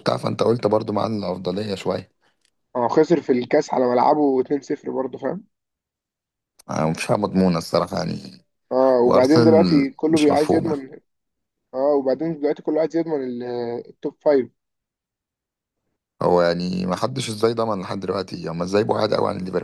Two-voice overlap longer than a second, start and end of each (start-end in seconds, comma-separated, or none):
9.1-10.8